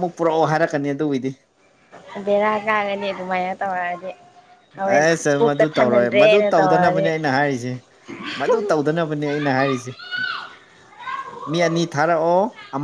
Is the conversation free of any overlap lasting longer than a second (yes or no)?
no